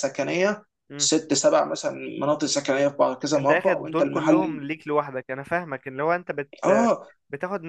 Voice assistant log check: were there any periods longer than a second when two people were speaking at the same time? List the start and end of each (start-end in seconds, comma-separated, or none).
3.4-4.6